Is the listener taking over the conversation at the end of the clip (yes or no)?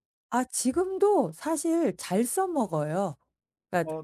no